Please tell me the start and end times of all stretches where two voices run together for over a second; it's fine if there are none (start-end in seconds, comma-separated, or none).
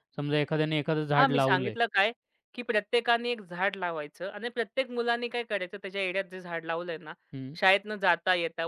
none